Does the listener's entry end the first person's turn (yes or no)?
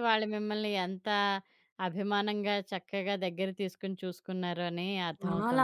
yes